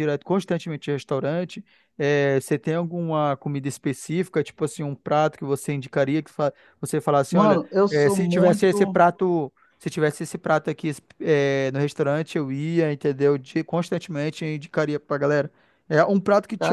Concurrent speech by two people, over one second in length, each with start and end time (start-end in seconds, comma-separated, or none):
7.3-9.0